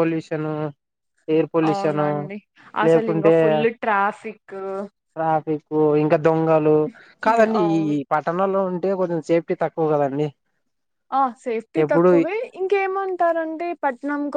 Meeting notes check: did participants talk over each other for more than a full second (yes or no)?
no